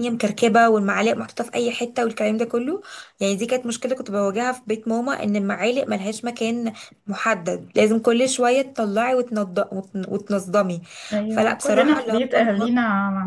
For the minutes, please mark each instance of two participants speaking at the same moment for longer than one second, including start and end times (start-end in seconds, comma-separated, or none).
11.3-12.7